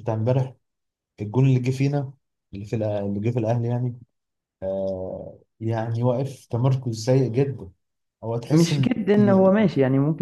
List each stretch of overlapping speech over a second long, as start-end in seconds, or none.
none